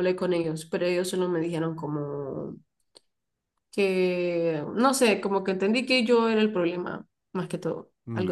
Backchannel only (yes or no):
no